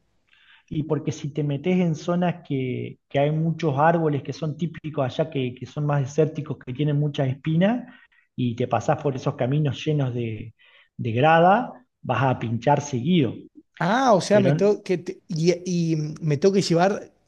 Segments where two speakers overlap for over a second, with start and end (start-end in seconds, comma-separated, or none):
none